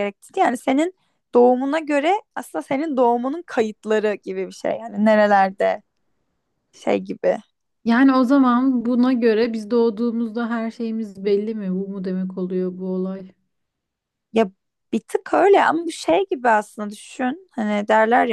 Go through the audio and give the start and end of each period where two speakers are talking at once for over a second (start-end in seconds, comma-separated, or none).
none